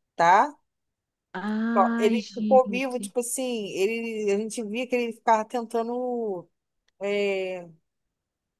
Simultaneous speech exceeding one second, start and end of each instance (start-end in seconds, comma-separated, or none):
1.7-3.1